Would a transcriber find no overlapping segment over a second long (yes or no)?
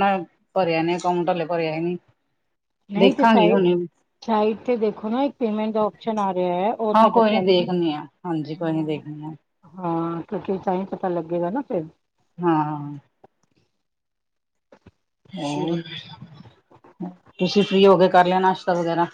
no